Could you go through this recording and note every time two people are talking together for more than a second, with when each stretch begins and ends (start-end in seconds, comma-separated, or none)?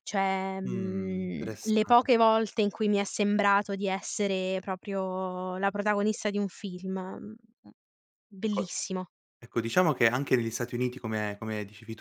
0.6-2.0